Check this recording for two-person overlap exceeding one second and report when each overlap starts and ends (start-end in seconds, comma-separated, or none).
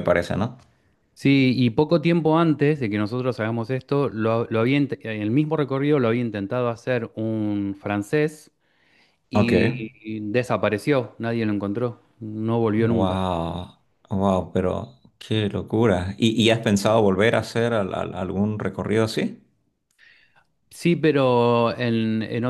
none